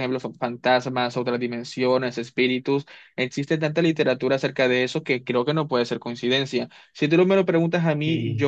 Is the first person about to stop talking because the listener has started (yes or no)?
yes